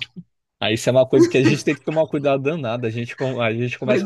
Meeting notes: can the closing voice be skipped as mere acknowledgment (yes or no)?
yes